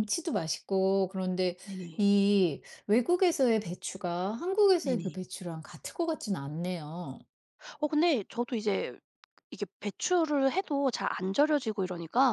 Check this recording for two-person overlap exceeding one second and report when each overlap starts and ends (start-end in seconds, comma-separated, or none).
none